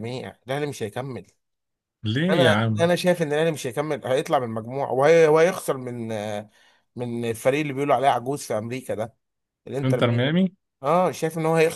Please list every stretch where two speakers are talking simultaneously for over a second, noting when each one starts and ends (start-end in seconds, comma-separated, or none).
none